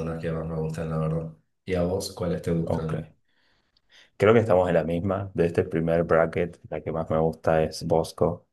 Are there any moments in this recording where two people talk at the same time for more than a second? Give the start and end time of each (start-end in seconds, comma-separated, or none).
none